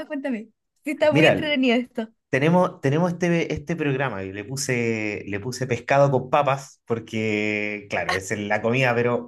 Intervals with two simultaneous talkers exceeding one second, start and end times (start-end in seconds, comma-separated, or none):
none